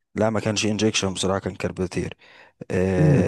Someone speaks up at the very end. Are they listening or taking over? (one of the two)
listening